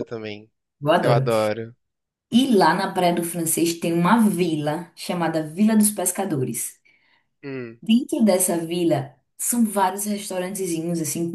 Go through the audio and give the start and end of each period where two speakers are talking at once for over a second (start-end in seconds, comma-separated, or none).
none